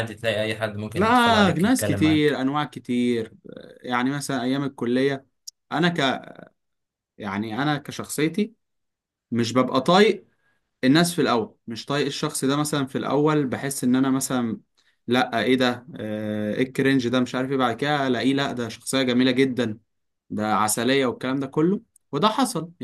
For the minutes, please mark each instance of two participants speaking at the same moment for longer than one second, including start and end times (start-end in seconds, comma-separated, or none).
0.9-2.5